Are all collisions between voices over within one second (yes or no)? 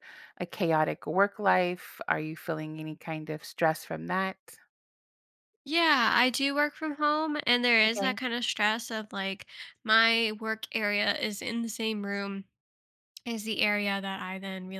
yes